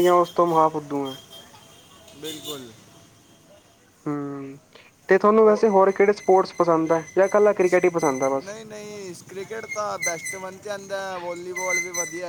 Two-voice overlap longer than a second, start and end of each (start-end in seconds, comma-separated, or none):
none